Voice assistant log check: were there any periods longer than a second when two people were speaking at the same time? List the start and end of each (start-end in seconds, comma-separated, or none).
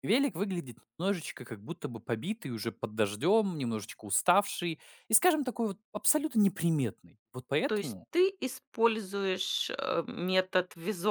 none